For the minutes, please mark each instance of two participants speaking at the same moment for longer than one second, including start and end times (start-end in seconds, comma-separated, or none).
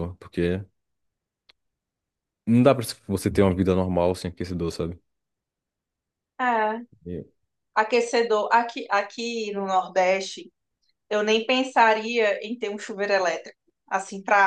none